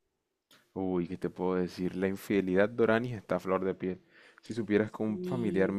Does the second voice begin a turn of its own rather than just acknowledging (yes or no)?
no